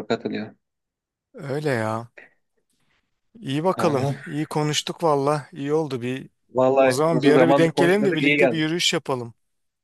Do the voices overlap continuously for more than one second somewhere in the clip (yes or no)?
yes